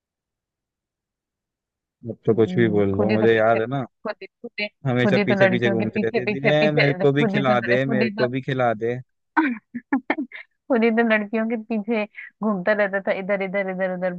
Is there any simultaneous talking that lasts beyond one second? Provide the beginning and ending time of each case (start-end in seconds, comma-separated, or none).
2.3-3.9, 5.0-8.3